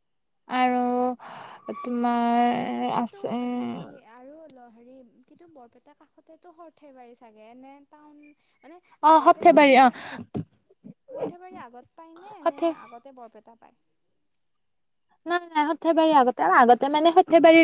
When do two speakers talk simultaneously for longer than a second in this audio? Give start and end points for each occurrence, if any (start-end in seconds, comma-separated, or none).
none